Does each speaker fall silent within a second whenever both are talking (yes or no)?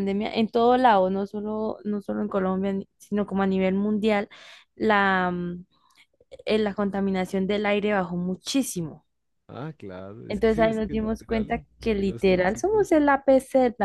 no